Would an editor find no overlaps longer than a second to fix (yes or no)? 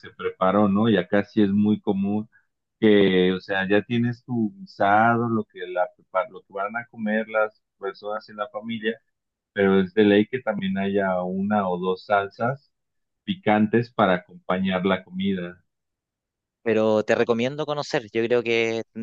yes